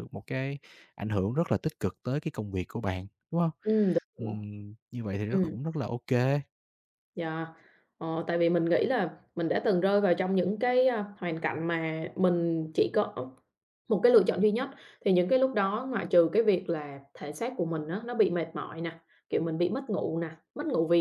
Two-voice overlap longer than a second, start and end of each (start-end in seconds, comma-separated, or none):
none